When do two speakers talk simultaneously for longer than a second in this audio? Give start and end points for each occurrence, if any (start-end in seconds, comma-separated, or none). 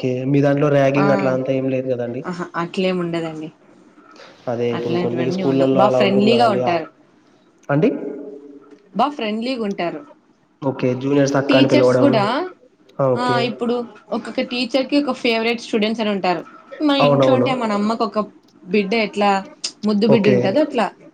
4.8-6.8